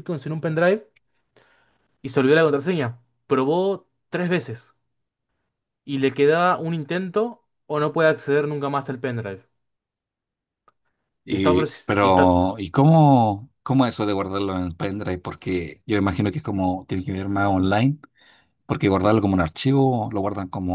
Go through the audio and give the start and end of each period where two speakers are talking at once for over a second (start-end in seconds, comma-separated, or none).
11.3-12.6